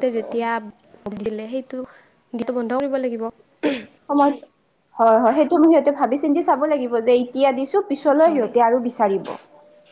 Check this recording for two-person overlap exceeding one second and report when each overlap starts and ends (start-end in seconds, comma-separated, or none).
none